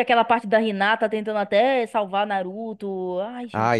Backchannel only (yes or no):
no